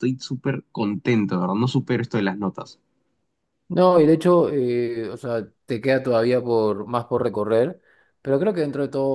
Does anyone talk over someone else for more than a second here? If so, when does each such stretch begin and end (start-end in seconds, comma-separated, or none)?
none